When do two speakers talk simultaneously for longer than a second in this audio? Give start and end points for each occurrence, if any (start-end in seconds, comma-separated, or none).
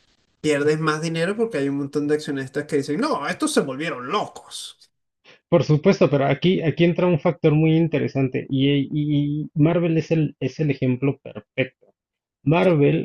none